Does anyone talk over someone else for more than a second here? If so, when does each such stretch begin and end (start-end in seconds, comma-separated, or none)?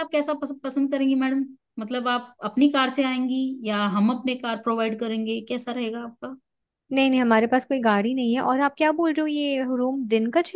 none